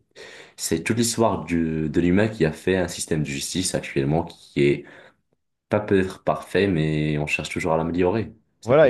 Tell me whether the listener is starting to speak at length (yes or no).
yes